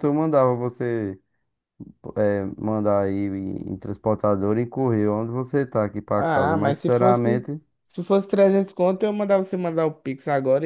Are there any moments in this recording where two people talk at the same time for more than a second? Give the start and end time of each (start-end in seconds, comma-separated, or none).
6.2-7.5